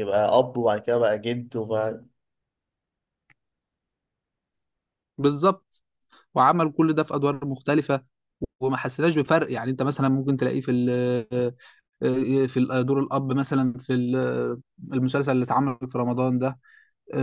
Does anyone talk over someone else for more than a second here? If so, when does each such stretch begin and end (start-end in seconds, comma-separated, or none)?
none